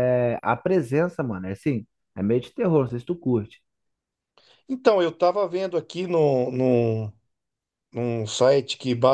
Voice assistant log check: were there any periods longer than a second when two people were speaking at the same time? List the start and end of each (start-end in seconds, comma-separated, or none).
none